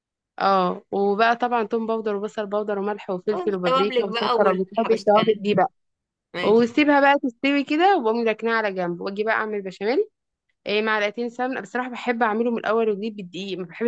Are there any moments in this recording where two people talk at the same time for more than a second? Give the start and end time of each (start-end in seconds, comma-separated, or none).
3.3-5.6